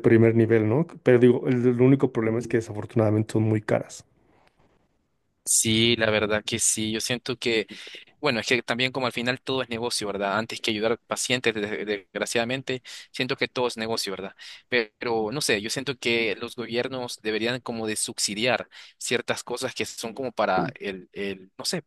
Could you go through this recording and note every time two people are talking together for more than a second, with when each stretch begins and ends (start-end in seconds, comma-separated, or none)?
none